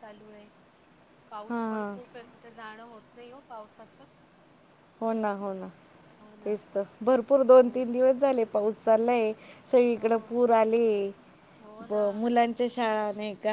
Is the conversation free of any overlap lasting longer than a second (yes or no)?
yes